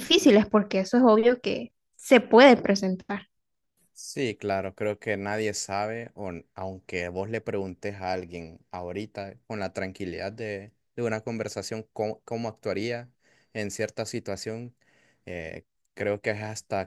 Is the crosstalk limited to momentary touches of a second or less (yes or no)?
yes